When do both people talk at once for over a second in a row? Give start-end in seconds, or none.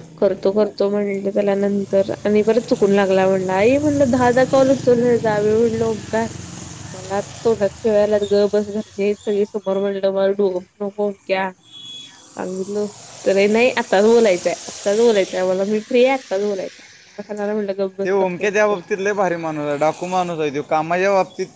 none